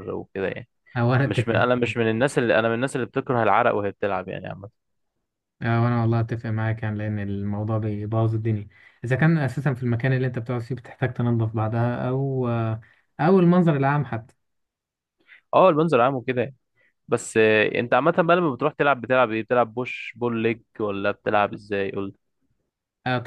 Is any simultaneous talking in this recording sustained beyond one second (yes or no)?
no